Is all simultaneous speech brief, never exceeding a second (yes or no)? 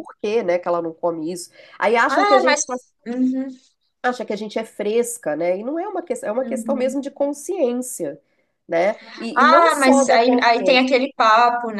no